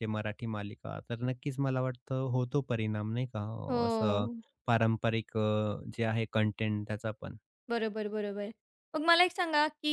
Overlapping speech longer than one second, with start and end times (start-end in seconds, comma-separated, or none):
none